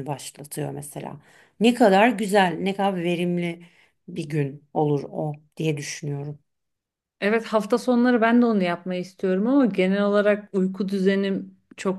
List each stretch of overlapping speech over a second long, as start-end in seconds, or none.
none